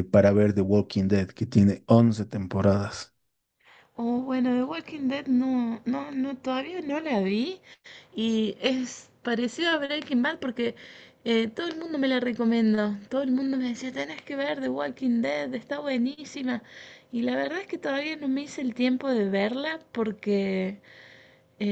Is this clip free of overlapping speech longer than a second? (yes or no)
yes